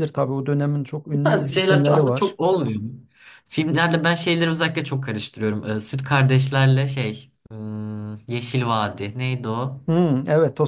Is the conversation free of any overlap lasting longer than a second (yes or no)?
no